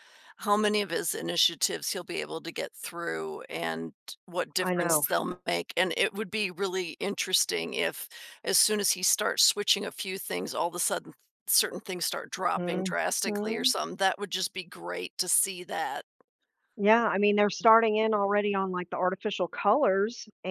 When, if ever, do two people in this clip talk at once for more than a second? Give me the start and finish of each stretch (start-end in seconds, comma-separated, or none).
none